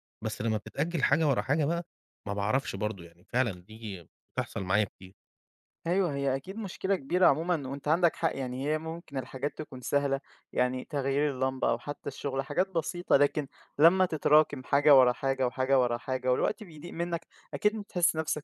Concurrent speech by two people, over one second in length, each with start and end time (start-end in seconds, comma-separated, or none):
none